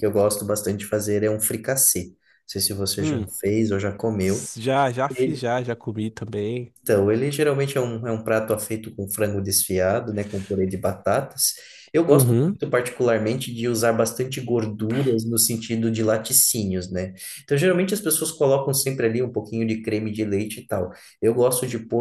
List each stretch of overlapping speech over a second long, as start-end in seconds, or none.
none